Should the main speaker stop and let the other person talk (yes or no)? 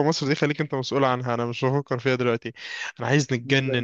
no